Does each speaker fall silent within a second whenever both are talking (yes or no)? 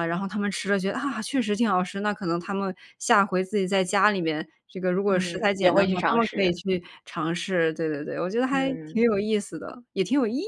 no